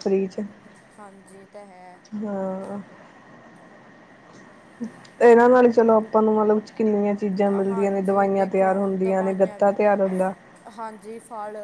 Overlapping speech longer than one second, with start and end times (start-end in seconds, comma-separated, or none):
7.7-9.8